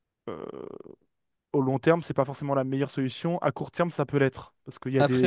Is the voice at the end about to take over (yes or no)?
no